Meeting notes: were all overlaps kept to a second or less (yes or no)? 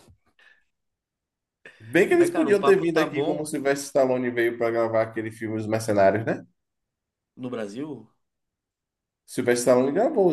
no